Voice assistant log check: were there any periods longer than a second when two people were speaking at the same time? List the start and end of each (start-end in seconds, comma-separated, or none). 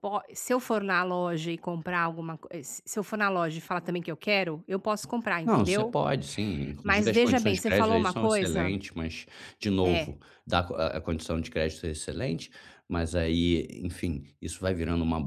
6.8-8.8